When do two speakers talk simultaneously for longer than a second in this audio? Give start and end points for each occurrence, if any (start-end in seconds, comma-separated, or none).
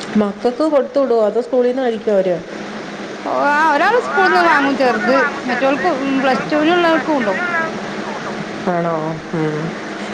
4.4-7.4